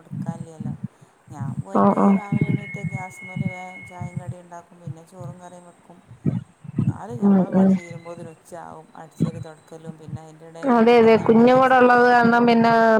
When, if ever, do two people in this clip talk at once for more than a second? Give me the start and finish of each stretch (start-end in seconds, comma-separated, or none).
10.8-12.4